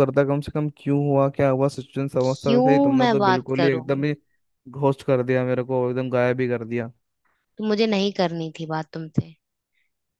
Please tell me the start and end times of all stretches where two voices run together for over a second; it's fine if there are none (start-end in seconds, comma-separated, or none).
2.2-4.0